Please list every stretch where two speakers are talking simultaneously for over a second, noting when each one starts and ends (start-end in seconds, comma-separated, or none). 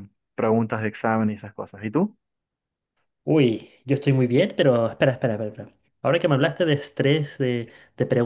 none